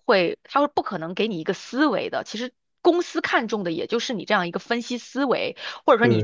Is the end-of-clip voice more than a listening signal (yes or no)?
no